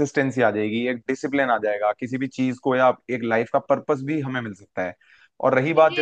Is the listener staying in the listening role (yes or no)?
no